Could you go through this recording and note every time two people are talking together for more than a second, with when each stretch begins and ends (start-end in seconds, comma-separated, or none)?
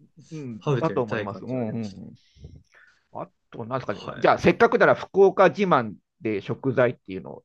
0.6-2.1